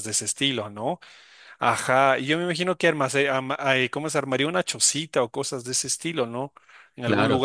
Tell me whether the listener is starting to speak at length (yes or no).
no